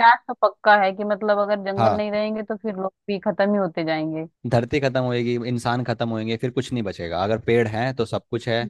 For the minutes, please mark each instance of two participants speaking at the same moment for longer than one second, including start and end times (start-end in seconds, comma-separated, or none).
none